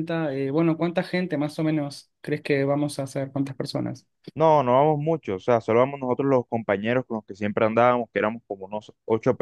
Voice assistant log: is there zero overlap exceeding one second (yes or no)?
yes